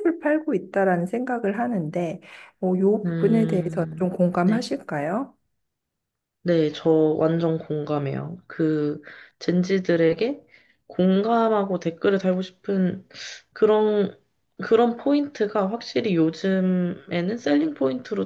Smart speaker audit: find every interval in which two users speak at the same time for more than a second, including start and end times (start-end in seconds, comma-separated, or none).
3.0-4.6